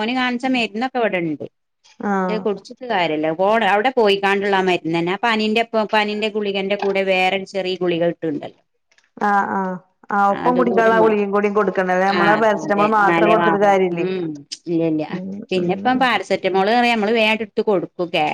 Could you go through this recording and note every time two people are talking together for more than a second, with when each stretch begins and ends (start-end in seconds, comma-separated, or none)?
none